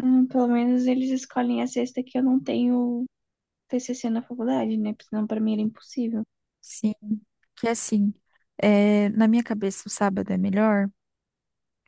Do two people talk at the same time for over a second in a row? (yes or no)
no